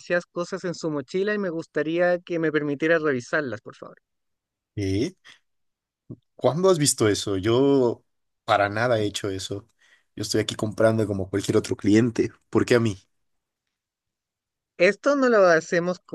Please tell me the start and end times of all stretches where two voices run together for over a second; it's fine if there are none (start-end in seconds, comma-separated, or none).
none